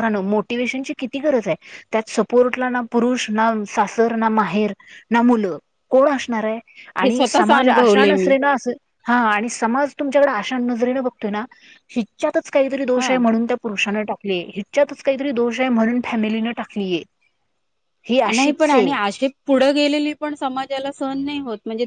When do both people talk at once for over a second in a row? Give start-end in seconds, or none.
7.0-8.3